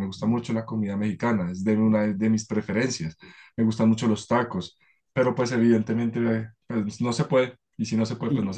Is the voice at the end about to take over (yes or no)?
yes